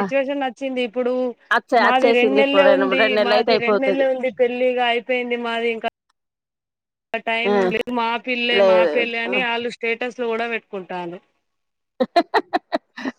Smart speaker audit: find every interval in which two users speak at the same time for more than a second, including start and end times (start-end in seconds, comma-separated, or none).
1.8-4.0